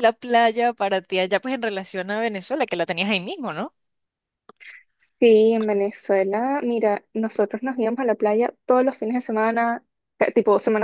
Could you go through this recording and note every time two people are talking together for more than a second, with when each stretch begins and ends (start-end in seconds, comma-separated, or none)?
none